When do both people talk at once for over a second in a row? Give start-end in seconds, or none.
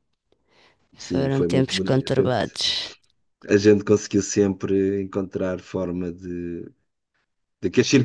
1.1-2.6